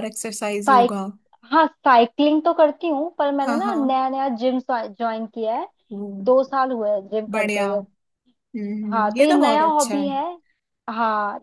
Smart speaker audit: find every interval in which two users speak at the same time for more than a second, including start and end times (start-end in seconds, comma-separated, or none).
8.9-10.2